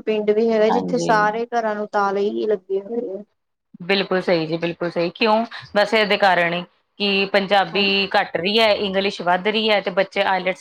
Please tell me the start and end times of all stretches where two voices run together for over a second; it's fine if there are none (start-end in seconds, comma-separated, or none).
none